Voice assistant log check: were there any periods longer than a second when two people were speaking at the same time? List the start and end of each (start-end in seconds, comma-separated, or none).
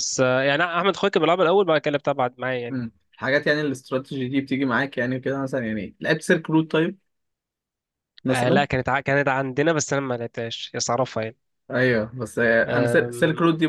none